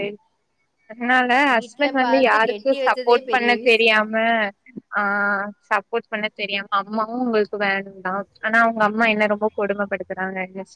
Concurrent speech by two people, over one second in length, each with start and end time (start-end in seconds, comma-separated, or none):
1.6-4.0